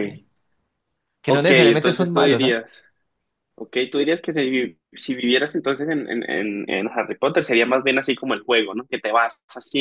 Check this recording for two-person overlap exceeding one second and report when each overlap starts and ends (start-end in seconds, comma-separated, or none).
1.2-2.6